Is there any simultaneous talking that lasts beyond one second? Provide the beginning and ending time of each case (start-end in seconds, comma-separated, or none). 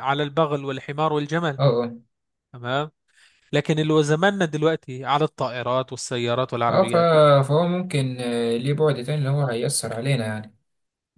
none